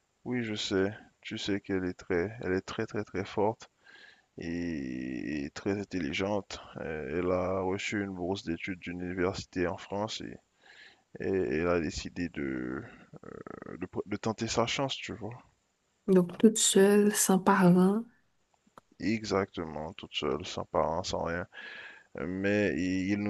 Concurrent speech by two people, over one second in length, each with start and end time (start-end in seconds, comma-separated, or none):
none